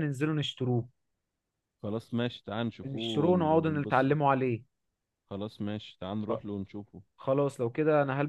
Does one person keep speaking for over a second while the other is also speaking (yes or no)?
yes